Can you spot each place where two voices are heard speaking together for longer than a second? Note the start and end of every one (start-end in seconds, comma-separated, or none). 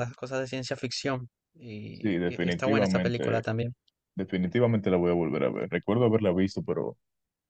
1.9-3.4